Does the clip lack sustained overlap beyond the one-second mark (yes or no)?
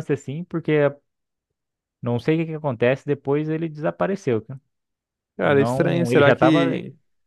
no